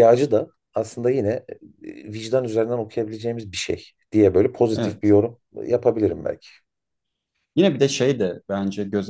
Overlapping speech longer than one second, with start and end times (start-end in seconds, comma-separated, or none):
none